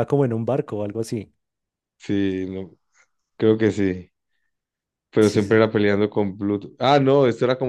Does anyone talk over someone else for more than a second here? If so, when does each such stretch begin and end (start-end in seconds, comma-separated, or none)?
none